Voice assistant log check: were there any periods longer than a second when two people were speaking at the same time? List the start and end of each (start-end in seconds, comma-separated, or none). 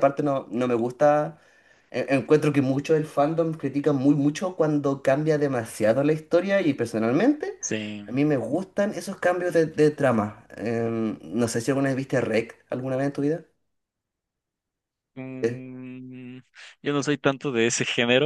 none